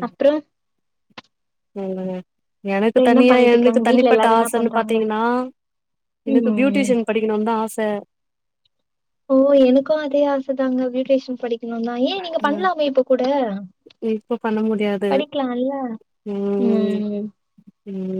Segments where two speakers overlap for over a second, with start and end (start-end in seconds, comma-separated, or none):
3.1-5.0